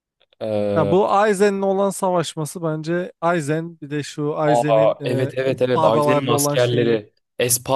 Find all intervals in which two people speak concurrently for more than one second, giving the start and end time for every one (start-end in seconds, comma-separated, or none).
4.5-7.0